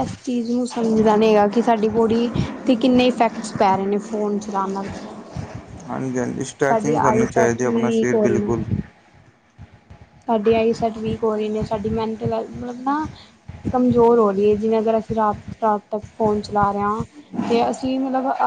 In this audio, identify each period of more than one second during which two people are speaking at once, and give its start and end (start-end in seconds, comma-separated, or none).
6.7-8.5